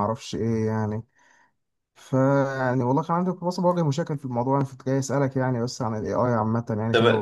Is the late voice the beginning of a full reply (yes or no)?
yes